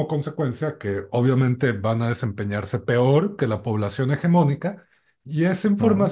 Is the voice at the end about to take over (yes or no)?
no